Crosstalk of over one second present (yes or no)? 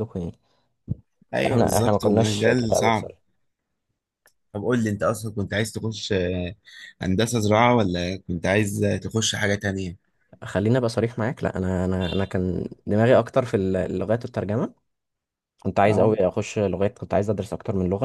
yes